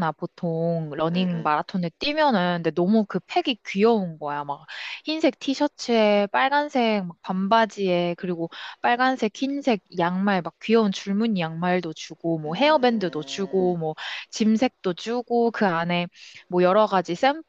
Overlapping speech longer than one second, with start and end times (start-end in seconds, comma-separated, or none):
12.4-13.8